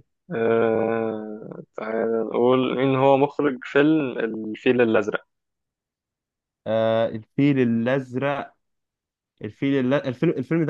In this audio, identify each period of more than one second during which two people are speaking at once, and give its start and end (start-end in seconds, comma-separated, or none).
none